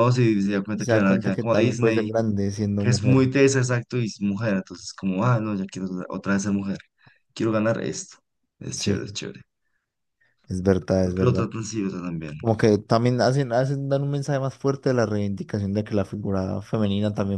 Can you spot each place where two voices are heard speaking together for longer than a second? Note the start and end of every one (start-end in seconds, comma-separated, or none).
0.7-2.1